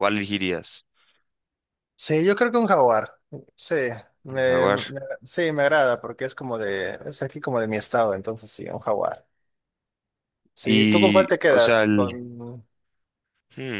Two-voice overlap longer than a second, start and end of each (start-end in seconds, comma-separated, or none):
10.6-12.1